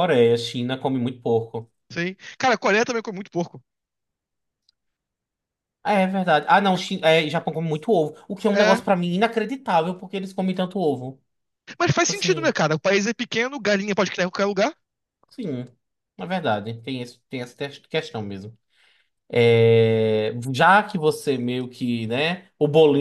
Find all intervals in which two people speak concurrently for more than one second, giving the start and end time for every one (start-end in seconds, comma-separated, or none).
none